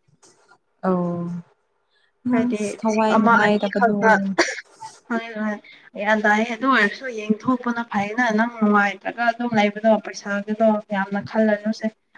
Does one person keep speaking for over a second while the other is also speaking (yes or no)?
yes